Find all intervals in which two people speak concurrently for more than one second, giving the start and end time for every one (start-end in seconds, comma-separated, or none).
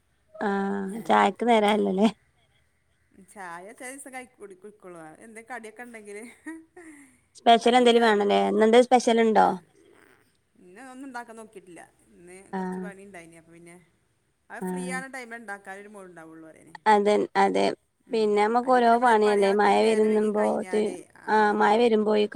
18.6-20.4